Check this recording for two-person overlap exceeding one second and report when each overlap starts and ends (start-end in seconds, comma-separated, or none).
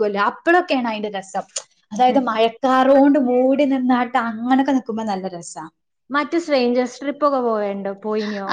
none